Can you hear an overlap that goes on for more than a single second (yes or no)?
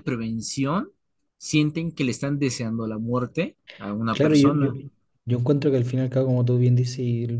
no